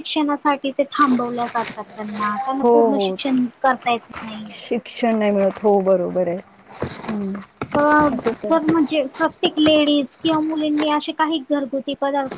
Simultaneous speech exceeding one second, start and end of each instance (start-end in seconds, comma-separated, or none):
none